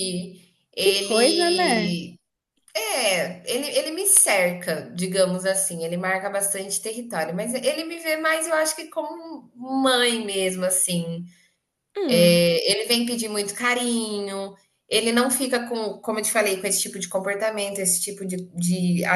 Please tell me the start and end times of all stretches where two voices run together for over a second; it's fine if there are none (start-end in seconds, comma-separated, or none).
0.8-2.0